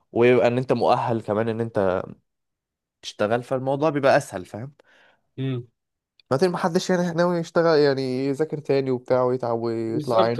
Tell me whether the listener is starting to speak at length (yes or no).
yes